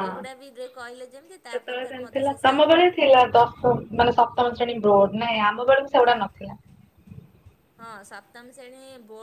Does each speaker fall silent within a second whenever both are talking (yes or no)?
no